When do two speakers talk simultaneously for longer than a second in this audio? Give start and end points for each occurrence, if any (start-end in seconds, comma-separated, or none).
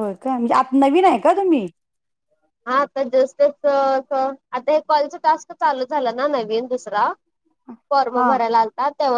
none